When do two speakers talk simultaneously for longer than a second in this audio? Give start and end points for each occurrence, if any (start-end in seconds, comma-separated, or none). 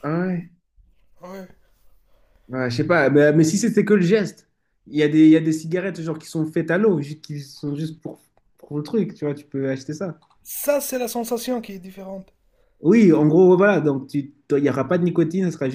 none